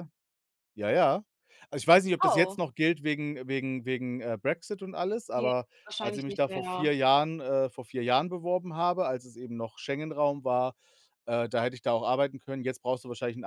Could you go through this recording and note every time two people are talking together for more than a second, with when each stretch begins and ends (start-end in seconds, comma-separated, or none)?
5.3-6.9